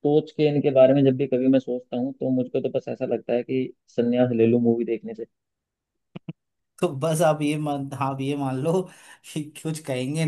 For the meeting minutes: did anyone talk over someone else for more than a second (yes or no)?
no